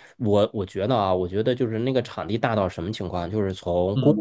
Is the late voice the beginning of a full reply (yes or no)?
no